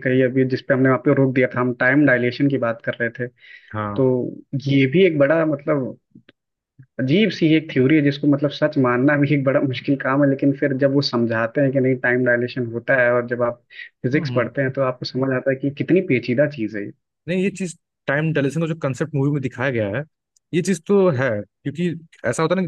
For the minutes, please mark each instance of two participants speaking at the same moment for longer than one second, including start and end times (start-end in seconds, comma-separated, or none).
none